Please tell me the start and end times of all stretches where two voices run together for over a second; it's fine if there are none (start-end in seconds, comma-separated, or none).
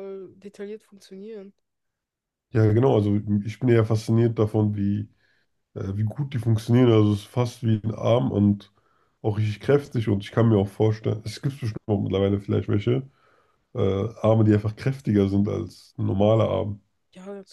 none